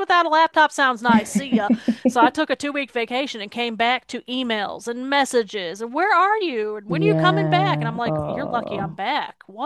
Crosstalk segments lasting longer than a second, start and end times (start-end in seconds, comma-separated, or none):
6.9-9.0